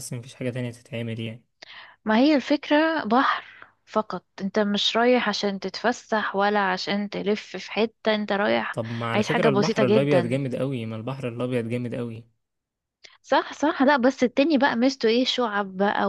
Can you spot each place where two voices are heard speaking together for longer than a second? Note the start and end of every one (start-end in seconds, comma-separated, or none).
8.7-10.4